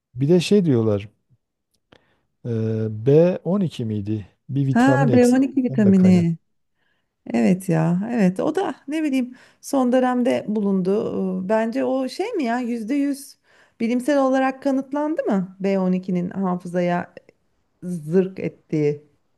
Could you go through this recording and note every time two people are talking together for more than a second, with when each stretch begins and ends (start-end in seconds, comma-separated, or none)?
4.7-6.3